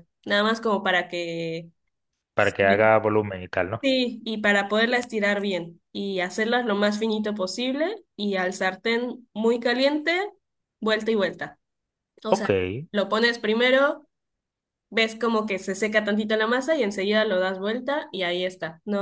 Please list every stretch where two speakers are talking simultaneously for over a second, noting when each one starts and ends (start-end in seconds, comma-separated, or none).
none